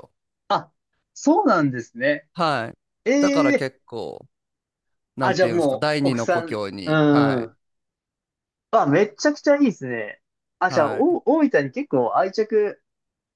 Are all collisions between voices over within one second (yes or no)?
no